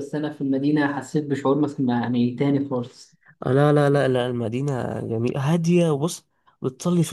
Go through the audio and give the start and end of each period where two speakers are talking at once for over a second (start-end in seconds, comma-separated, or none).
none